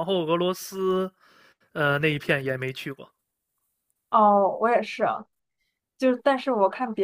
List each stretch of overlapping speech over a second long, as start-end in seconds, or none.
none